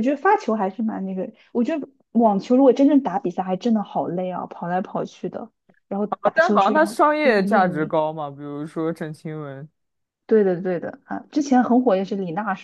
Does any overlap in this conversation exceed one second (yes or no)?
yes